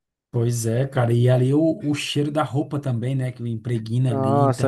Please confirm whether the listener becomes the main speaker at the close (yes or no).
yes